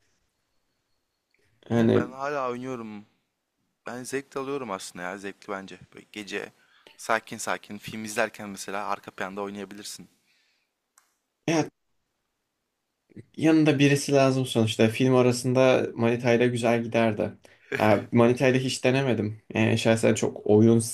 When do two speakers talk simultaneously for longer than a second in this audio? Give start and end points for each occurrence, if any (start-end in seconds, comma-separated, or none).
none